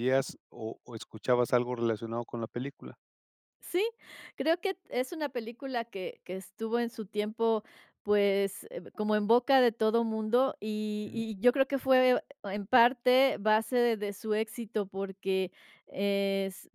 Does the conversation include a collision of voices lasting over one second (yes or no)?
no